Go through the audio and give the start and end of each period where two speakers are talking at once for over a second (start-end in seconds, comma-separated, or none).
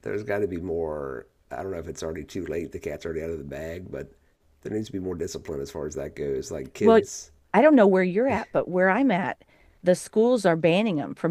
none